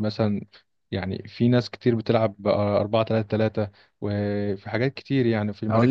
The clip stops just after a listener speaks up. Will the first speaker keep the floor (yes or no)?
no